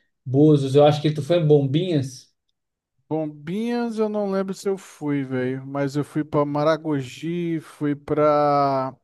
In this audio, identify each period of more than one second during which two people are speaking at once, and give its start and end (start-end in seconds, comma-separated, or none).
none